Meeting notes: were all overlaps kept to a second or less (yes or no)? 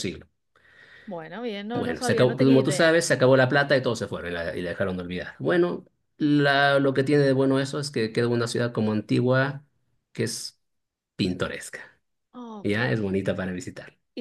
no